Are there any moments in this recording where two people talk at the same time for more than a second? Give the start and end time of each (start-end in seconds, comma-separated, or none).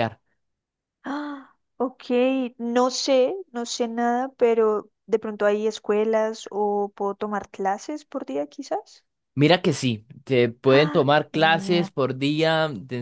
10.6-11.9